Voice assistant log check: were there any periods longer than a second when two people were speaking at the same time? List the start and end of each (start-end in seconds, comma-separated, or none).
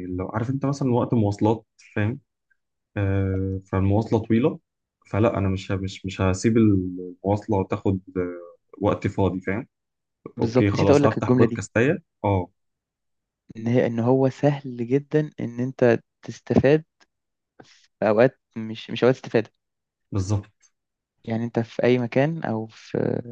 10.4-11.7